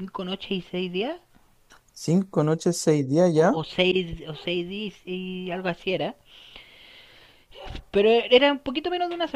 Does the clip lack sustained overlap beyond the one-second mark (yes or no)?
yes